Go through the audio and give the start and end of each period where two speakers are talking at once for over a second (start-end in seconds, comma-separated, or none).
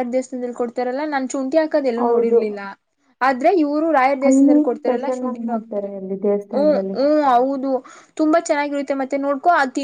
4.3-5.9